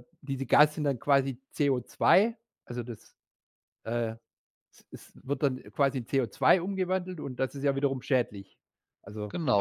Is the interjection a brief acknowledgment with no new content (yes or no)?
no